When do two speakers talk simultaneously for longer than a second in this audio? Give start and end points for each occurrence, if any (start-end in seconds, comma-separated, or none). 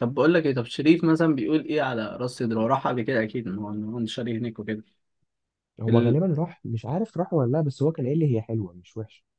none